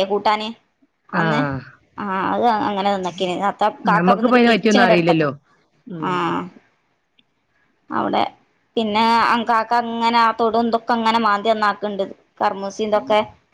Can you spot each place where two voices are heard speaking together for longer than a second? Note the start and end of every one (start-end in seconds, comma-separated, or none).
3.9-5.2